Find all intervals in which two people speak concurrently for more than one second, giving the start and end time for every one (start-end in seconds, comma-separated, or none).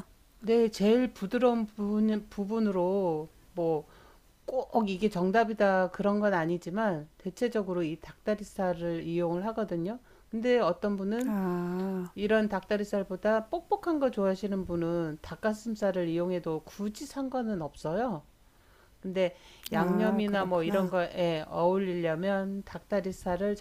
19.7-20.9